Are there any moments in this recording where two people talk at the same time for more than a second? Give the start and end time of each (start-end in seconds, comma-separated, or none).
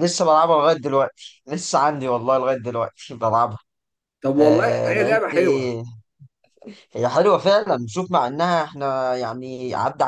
4.4-5.7